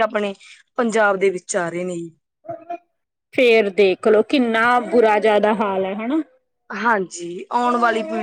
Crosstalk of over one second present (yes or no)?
no